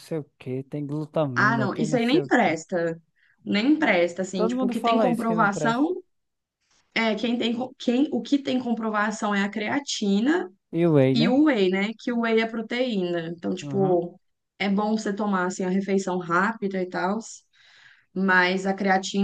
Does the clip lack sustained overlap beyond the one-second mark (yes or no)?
no